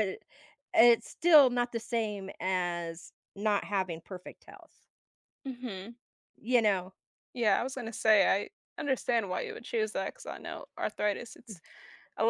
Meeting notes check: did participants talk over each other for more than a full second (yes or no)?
no